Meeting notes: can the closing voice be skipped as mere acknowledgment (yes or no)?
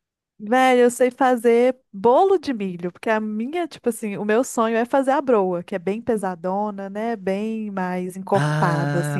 no